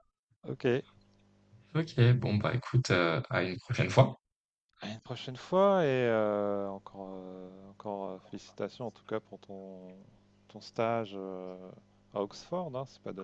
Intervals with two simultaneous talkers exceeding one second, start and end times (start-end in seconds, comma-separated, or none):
none